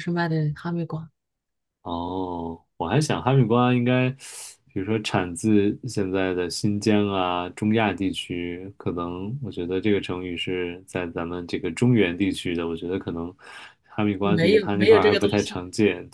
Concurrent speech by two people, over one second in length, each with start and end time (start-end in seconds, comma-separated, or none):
14.2-15.6